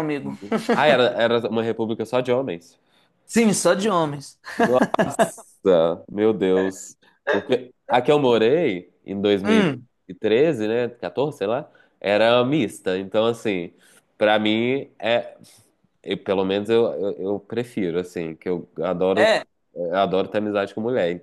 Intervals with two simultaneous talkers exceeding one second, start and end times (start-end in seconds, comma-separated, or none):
none